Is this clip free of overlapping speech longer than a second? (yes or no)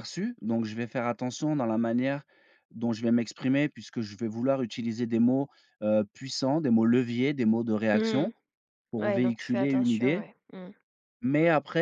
no